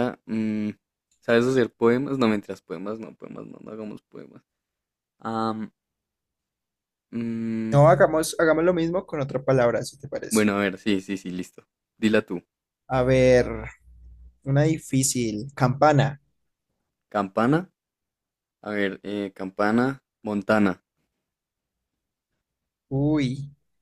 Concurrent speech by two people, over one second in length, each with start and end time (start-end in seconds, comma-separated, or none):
none